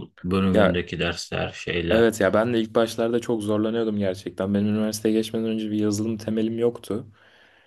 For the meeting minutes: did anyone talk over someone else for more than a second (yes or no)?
no